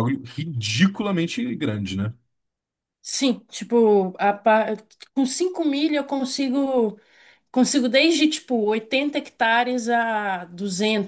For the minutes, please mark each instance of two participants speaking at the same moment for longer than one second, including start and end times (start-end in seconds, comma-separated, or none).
none